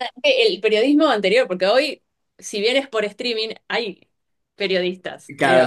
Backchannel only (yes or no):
no